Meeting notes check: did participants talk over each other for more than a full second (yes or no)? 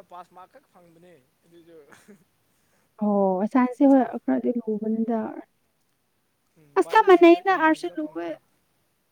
yes